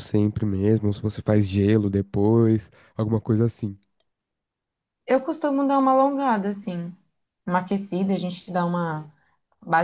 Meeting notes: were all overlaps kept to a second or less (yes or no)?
yes